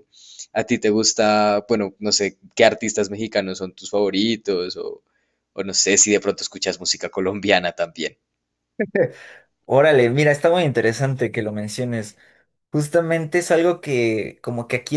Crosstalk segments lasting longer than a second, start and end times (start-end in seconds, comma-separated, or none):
none